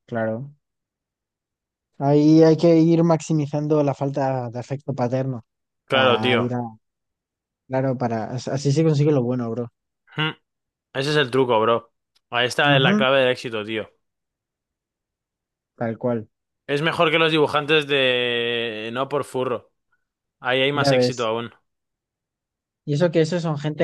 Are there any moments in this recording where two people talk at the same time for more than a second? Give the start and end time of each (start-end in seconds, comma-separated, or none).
none